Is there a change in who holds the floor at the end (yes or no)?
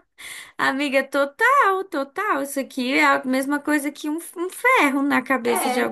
yes